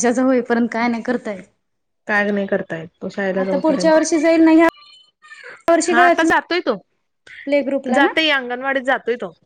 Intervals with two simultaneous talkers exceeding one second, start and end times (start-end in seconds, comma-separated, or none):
none